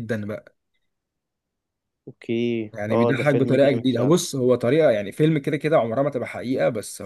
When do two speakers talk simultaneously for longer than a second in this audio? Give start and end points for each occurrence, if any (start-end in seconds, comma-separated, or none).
2.7-4.2